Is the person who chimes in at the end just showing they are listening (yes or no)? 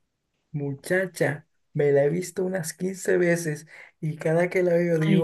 yes